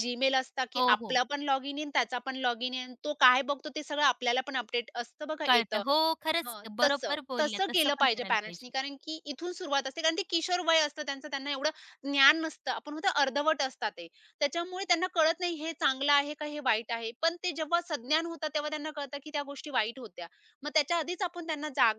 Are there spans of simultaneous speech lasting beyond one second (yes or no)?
yes